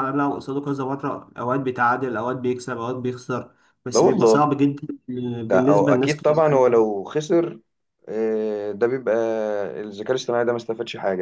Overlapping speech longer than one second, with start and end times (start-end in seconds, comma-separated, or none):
5.5-6.8